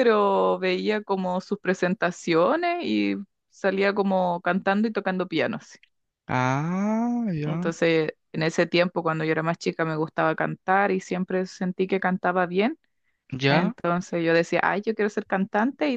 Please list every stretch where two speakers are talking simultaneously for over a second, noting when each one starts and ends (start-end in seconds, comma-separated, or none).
none